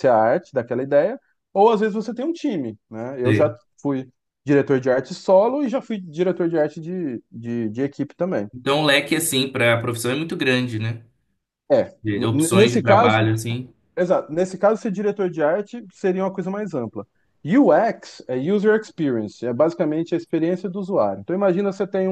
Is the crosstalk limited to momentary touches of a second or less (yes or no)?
no